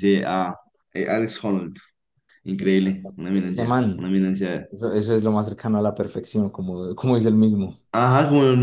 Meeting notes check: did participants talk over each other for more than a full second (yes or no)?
yes